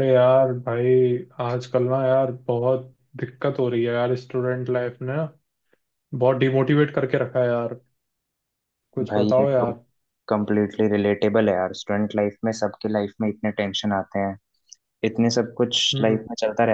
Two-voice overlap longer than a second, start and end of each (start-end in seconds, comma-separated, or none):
none